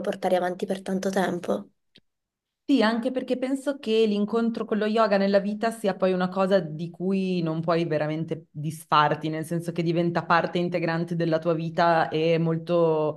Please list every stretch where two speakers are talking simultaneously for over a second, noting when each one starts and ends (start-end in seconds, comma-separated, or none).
none